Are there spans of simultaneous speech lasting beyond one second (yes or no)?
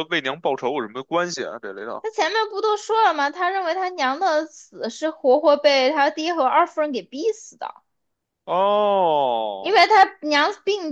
no